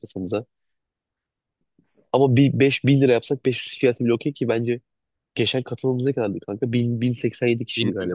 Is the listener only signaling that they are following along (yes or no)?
yes